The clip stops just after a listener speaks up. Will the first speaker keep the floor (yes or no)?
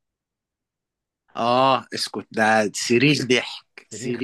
no